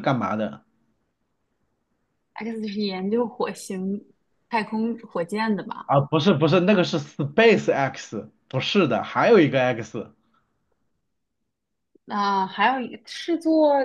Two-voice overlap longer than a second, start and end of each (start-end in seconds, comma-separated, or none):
none